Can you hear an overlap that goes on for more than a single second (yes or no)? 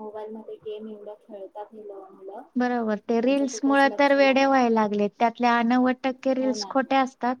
yes